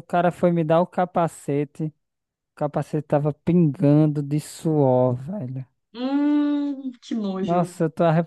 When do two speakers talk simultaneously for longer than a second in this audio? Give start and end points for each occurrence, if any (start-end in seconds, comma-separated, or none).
none